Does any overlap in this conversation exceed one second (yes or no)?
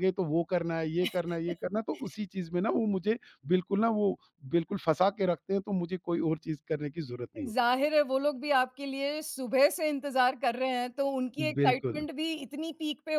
no